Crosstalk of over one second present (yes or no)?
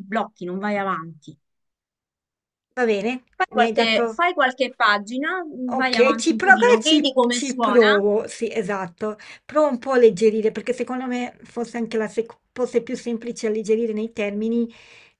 yes